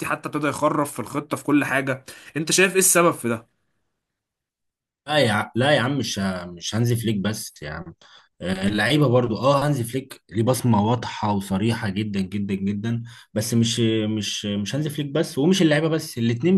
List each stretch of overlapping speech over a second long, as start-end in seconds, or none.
none